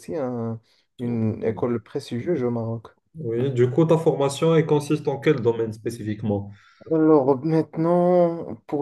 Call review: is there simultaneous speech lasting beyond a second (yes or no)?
no